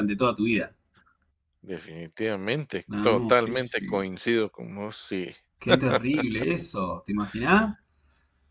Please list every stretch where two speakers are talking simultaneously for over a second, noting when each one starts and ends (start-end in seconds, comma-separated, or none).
2.9-4.1